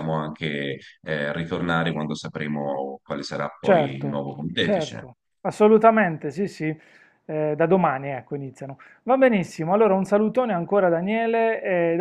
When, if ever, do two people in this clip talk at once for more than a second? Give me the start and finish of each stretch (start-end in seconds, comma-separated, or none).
3.6-5.1